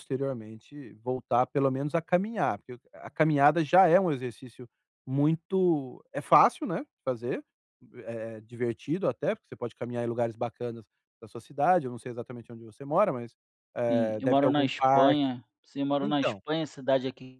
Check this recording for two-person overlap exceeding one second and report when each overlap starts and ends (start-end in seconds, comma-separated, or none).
13.8-15.3